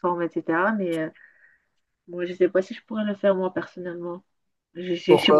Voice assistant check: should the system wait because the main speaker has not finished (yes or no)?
yes